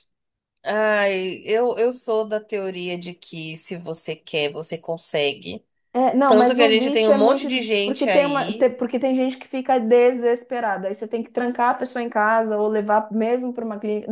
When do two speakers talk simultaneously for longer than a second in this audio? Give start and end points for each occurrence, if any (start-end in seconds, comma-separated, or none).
6.3-8.7